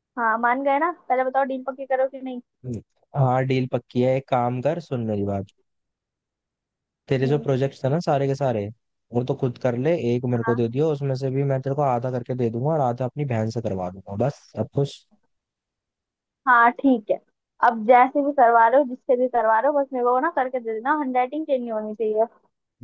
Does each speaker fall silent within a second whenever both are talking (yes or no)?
yes